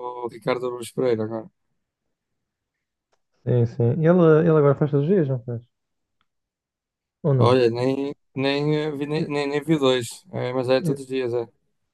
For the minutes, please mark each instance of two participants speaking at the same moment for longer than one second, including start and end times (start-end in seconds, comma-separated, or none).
none